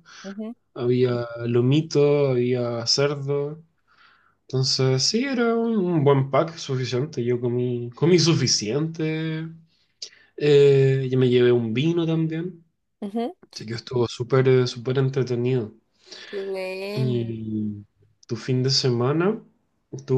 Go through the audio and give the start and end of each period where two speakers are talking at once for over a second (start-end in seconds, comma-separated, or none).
none